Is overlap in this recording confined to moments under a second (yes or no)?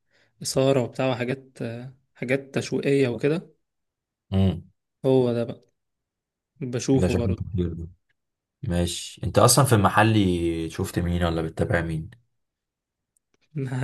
yes